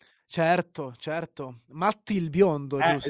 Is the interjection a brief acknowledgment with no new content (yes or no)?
no